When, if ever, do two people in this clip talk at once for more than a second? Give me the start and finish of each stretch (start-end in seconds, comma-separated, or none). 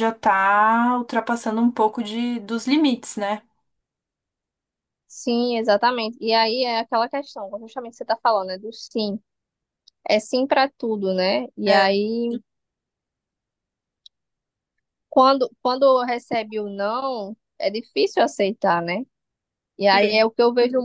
none